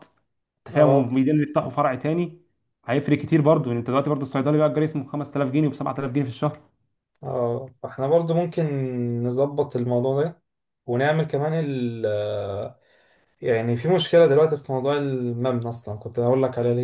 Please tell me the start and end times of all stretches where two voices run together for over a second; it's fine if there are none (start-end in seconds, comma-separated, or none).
none